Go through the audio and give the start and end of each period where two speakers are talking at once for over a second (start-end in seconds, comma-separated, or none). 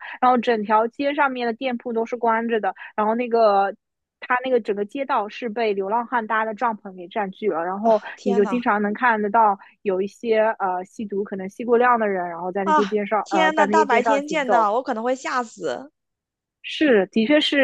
12.6-14.7